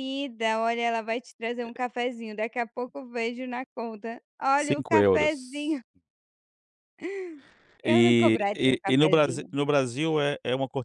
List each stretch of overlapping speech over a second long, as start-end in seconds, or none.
4.6-5.8, 7.8-9.5